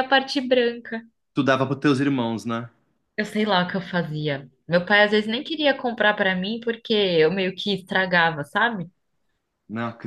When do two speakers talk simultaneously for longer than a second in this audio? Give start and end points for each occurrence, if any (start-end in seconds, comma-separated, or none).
none